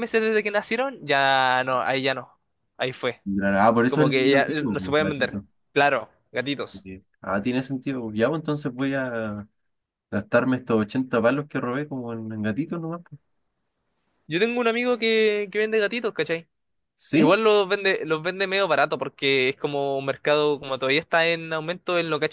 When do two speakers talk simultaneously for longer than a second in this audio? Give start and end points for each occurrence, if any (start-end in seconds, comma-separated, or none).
3.9-5.5